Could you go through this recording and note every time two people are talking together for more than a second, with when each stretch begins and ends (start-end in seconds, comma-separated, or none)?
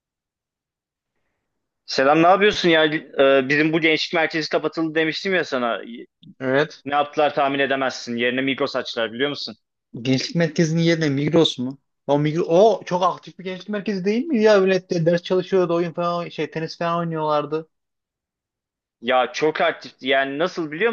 none